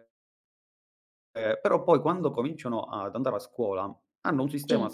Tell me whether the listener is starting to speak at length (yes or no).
no